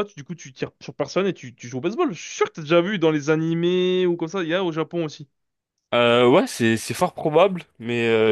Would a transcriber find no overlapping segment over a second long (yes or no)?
yes